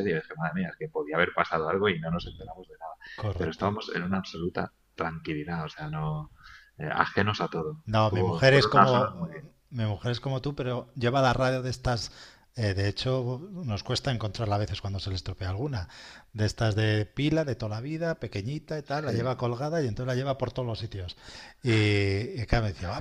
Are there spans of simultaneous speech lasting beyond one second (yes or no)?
yes